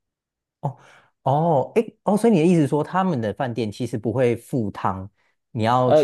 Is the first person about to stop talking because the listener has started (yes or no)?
yes